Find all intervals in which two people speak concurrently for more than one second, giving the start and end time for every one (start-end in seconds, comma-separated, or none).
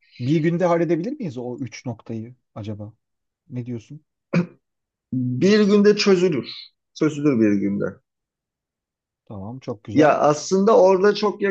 none